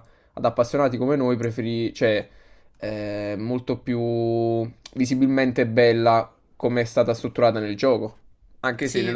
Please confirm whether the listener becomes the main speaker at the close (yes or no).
no